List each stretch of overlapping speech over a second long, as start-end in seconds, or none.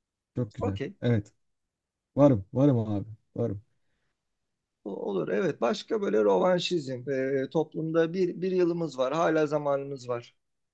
none